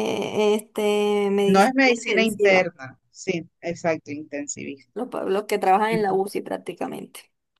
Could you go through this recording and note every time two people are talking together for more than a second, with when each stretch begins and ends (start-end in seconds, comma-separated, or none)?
1.4-2.7